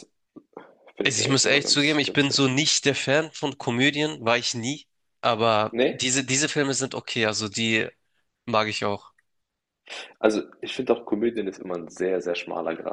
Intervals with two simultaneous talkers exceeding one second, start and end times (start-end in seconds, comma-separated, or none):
1.0-2.5